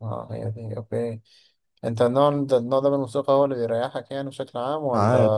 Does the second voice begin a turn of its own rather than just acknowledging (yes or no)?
yes